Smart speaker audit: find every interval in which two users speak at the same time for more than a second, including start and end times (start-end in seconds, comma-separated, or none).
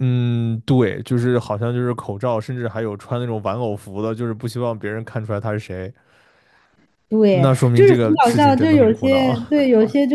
7.3-9.4